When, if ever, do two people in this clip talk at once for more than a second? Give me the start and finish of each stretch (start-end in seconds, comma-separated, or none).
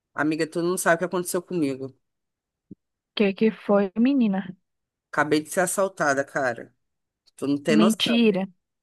none